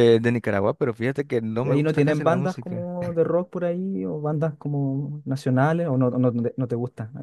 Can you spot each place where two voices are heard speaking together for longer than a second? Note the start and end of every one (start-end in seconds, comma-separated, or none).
1.6-2.9